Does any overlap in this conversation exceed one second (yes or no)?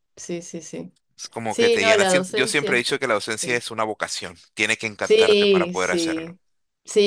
yes